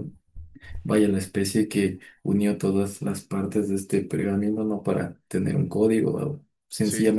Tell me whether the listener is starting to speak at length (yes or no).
no